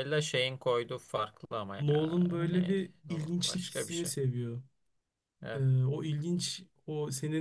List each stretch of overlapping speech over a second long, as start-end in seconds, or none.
1.8-4.1